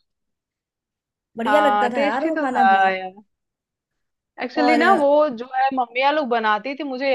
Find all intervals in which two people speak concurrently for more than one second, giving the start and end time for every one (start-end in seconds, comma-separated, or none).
1.5-2.8